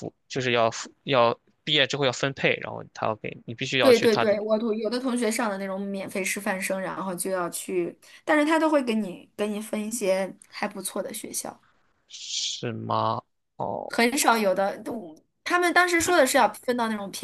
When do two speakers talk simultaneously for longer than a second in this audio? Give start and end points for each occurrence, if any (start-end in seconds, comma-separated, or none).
none